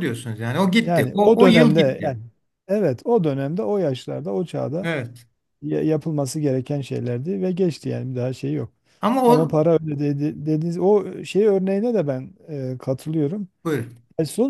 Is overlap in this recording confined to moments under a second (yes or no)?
no